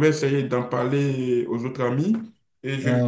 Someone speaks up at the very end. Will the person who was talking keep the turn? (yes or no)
yes